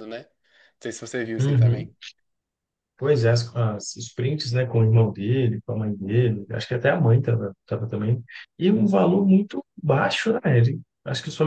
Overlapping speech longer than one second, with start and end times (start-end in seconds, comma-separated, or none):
none